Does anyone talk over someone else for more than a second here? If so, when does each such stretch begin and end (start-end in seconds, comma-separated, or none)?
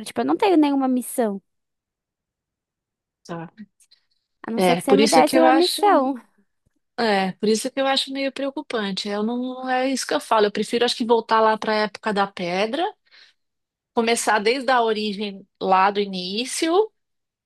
4.5-5.8